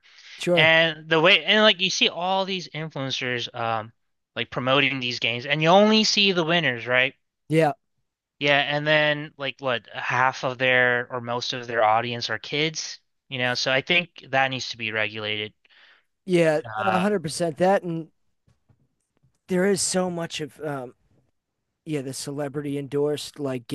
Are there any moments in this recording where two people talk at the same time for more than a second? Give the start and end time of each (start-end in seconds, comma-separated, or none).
none